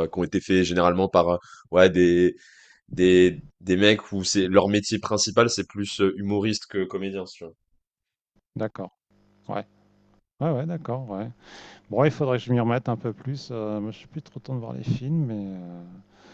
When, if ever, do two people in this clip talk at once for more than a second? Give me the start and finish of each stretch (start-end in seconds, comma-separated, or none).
none